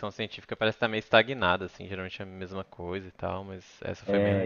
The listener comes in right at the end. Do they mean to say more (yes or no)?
yes